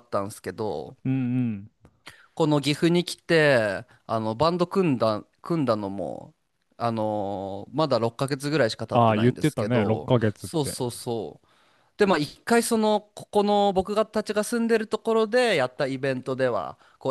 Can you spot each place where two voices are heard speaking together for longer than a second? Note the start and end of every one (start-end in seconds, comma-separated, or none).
8.9-10.8